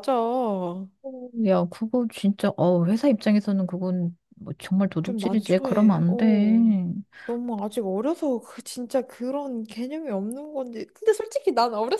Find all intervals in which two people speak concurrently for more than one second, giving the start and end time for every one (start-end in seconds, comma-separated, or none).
5.0-6.8